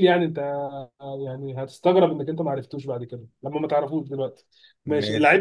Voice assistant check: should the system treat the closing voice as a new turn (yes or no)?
no